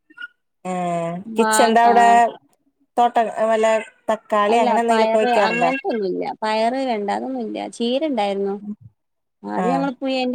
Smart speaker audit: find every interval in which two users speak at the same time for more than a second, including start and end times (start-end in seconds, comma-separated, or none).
none